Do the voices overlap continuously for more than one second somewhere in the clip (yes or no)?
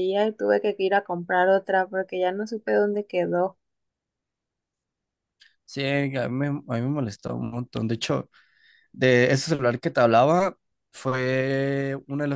no